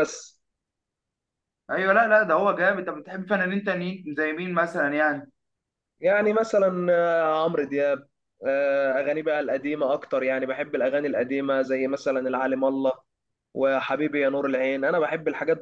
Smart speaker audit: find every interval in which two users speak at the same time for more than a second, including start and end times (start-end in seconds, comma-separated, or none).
none